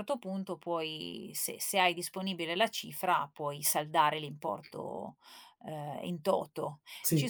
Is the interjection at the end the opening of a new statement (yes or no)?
no